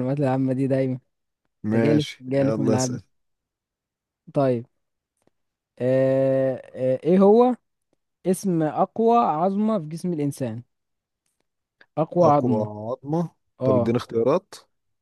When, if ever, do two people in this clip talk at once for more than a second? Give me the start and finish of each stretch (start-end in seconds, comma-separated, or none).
1.8-3.0